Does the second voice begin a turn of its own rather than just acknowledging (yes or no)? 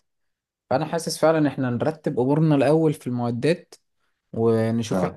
no